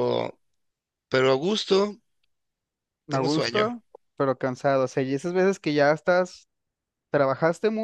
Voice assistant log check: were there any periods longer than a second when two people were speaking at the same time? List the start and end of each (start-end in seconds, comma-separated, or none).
none